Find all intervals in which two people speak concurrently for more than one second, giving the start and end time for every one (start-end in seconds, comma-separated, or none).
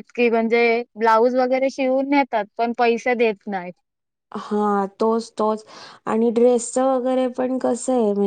none